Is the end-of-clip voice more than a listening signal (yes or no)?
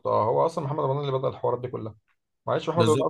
no